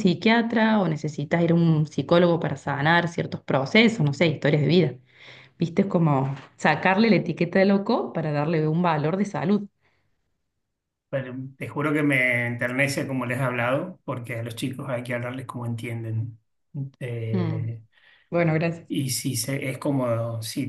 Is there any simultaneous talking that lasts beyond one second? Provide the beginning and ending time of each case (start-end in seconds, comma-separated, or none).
none